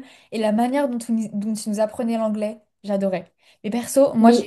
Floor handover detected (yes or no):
no